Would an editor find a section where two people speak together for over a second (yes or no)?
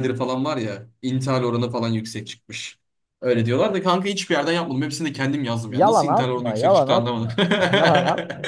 yes